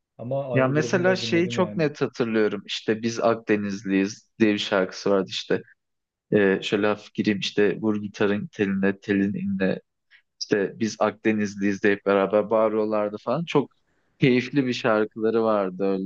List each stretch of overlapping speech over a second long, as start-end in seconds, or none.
0.5-1.9